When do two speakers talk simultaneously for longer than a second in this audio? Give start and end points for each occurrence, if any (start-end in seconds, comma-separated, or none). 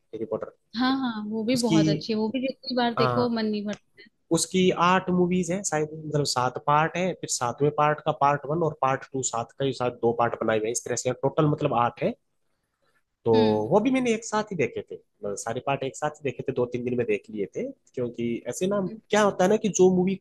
none